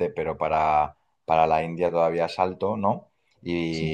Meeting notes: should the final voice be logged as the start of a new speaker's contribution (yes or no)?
no